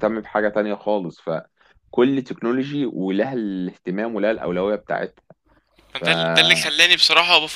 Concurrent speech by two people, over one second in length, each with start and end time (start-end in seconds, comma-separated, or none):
none